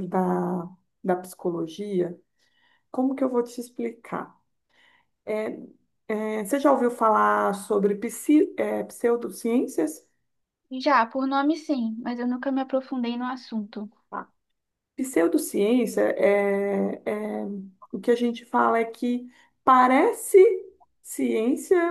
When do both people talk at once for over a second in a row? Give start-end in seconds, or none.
none